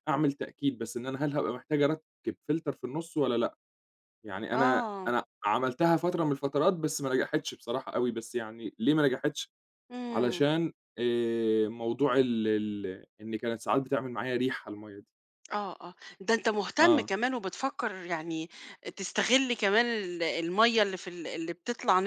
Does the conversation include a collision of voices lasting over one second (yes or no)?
no